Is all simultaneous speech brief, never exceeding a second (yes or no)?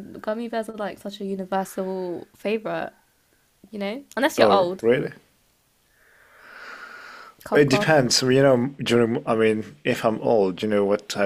yes